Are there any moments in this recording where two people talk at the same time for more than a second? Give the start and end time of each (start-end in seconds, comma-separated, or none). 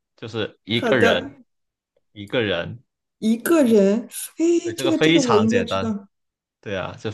4.6-5.9